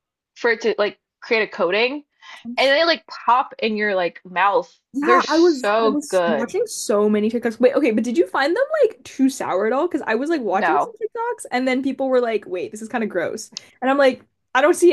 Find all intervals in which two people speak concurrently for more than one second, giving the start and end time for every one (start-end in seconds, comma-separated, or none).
4.9-6.5